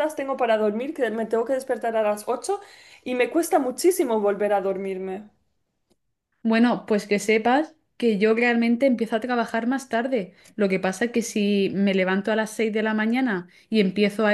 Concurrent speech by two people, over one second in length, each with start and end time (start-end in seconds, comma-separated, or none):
none